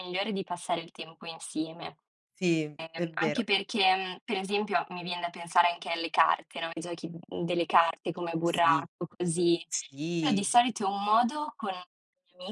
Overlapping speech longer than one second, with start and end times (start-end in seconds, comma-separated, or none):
none